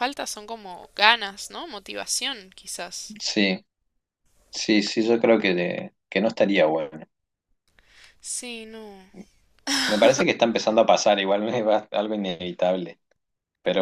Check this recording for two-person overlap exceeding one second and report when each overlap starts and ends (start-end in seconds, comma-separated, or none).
none